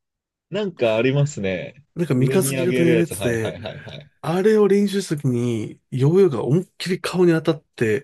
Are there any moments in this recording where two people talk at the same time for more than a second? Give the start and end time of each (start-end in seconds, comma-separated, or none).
1.9-3.6